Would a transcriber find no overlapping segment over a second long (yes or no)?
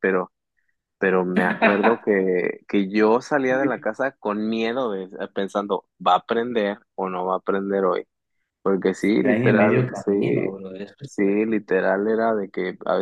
no